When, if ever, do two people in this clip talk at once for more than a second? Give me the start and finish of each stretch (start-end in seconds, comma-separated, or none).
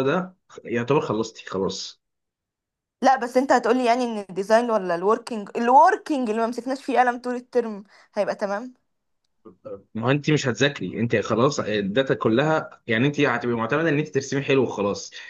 none